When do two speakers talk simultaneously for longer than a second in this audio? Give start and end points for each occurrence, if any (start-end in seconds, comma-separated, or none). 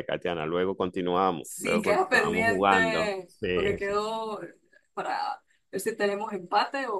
1.4-3.9